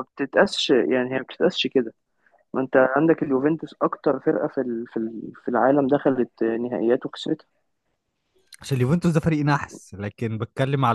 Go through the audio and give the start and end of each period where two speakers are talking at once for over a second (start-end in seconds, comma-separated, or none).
none